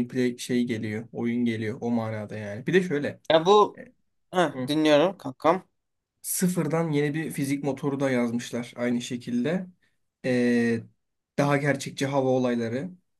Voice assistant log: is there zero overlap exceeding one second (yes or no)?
yes